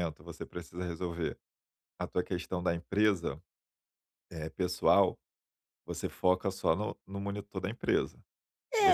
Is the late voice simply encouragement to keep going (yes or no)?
no